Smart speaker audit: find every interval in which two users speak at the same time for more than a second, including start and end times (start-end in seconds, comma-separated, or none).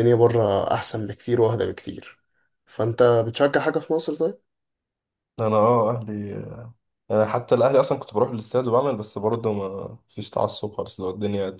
none